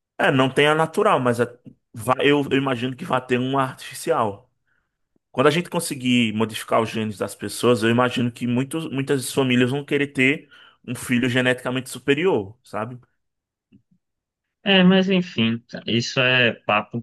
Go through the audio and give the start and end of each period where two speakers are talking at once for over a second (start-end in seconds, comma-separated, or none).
none